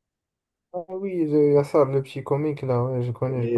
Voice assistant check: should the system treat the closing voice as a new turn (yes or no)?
yes